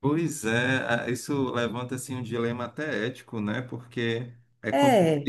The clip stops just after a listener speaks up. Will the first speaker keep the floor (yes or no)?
yes